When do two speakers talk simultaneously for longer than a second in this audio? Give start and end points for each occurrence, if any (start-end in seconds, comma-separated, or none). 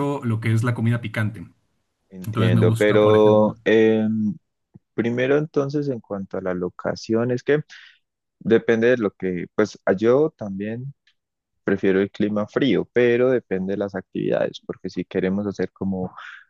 2.3-3.6